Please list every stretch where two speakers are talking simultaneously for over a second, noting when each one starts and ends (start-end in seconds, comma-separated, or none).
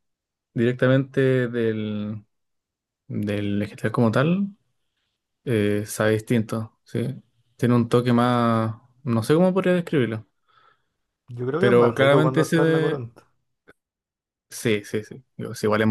11.6-13.0